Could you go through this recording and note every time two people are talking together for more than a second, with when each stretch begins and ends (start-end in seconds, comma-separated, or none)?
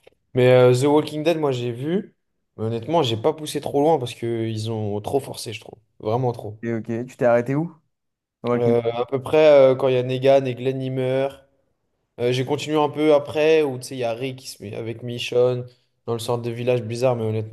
none